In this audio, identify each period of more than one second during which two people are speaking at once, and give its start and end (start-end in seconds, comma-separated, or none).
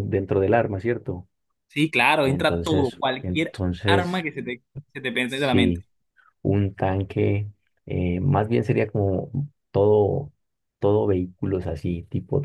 2.2-4.2